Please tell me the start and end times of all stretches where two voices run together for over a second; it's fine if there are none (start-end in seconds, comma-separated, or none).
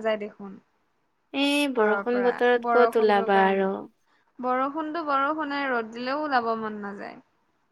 1.8-3.7